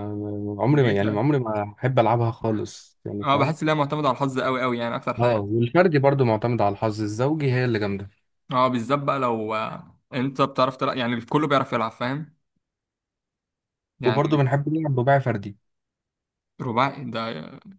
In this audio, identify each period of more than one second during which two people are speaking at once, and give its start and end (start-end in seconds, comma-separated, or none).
none